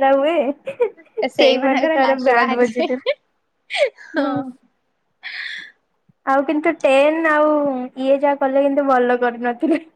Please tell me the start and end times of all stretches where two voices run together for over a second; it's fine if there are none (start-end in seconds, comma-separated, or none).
1.4-2.9